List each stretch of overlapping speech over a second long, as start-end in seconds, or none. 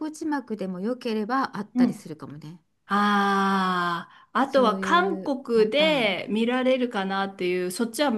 4.4-6.2